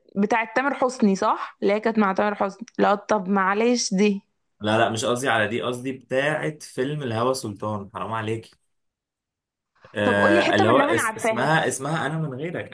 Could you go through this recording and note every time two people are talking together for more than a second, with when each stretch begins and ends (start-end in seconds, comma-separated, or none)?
10.0-11.6